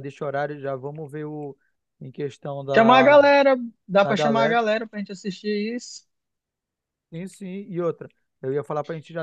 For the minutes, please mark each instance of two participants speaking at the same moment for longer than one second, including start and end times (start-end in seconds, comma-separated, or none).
none